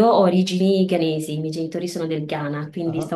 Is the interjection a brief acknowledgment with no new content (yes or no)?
yes